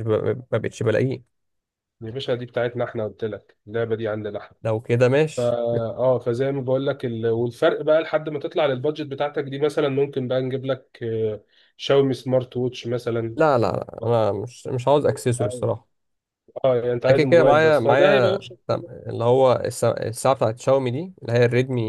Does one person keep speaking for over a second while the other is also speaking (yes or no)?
yes